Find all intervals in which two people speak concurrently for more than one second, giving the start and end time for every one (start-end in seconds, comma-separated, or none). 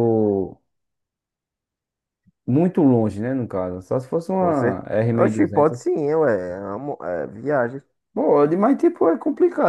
4.4-5.9